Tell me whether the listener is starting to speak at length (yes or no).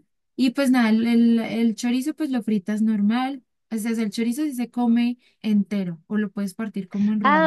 yes